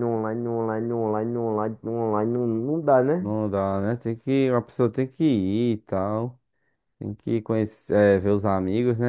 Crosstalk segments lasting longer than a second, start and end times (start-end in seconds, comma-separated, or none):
none